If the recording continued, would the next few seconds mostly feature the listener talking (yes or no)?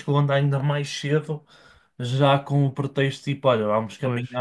no